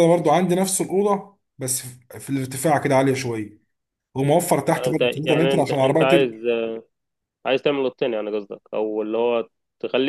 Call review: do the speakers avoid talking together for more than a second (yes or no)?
no